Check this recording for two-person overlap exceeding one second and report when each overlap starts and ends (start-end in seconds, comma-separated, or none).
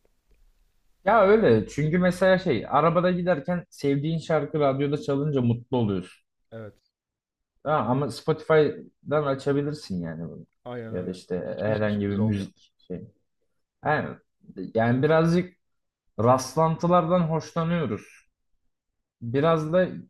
10.9-12.5